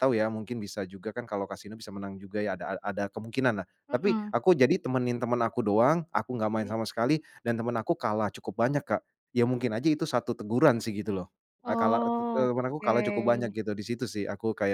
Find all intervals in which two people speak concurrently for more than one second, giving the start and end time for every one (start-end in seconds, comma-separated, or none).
11.7-13.5